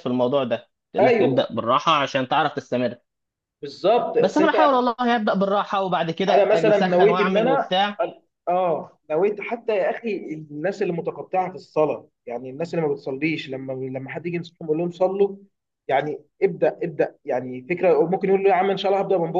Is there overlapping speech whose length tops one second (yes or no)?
yes